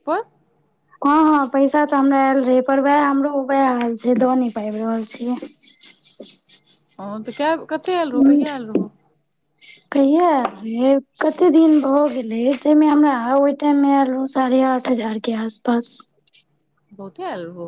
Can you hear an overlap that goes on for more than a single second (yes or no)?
no